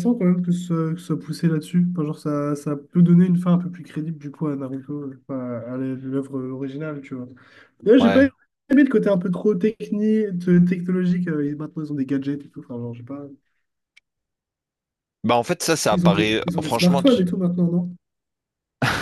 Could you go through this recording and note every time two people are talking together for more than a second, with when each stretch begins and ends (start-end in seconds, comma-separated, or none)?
15.9-17.2